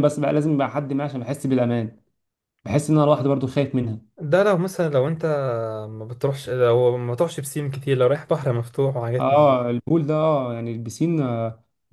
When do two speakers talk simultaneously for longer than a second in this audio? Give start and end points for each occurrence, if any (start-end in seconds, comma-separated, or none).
none